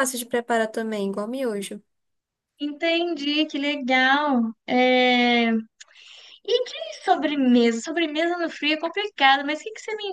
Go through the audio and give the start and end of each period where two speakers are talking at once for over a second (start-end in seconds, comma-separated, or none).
none